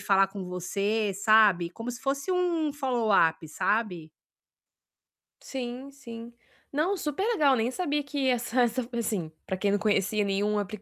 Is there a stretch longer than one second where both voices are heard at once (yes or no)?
no